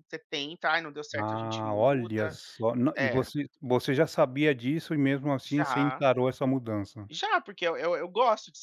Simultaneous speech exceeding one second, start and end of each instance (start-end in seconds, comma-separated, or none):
1.1-2.4